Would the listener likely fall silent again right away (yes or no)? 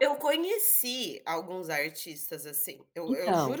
yes